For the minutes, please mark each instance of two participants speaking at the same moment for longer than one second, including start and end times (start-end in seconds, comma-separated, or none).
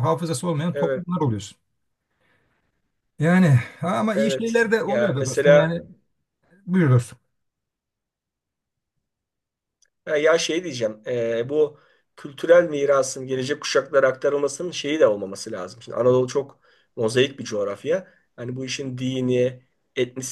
4.1-5.7